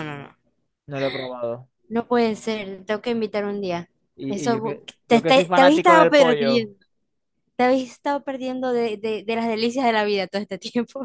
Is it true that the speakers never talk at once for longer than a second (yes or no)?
no